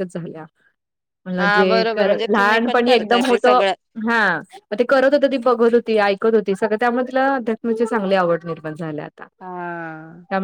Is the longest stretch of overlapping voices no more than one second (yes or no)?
no